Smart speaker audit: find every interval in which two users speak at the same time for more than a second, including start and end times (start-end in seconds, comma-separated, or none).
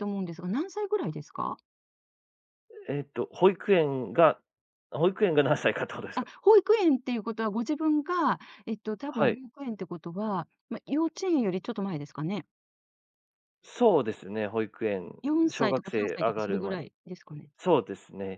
15.5-16.9